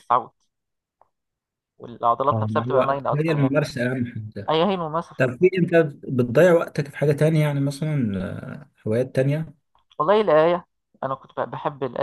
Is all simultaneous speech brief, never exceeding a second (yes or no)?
no